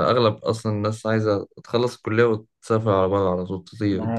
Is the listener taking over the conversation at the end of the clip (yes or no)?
yes